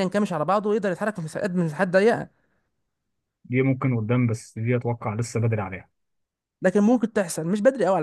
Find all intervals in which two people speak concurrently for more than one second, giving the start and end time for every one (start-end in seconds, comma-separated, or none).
none